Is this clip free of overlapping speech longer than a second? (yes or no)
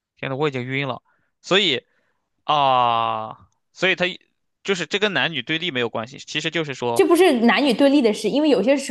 yes